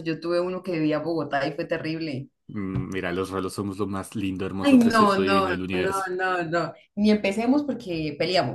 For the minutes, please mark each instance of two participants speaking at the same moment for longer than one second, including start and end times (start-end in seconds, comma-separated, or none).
4.6-6.1